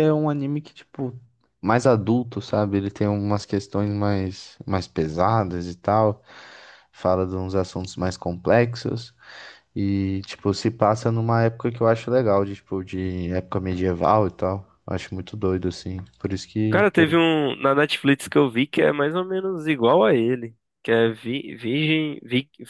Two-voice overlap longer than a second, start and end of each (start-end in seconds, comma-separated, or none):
none